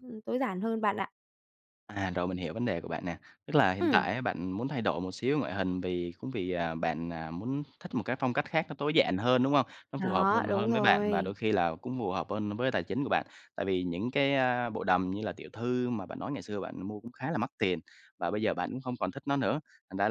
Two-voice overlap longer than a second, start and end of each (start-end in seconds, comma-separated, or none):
10.0-11.3